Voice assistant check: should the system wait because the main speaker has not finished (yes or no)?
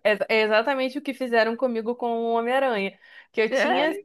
yes